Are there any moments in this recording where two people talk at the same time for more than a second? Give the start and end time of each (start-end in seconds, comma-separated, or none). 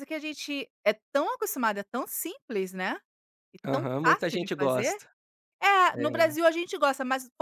3.6-5.0